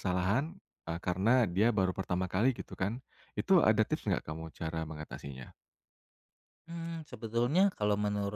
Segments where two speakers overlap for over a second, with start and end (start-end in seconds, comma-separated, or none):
none